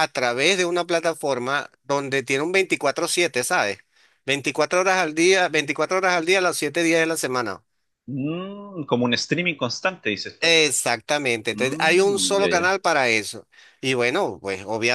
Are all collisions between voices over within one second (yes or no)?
no